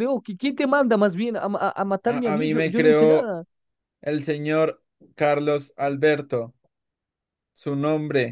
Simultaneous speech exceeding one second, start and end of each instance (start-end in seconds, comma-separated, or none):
2.1-3.3